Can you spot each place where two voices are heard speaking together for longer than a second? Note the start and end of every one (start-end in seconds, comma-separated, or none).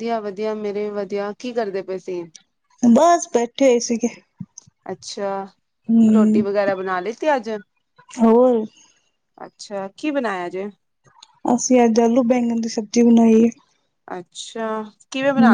none